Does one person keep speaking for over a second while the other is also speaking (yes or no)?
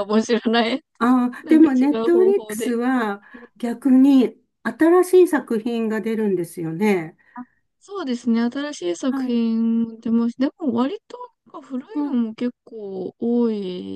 yes